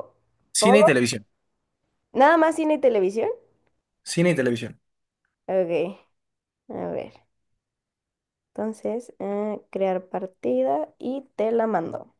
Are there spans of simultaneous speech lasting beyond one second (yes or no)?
no